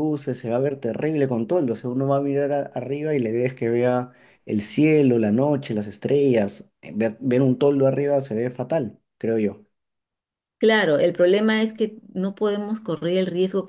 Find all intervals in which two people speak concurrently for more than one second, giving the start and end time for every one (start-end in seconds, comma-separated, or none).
none